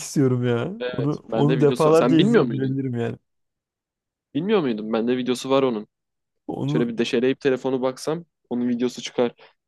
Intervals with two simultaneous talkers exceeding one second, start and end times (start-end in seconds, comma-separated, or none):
0.8-2.8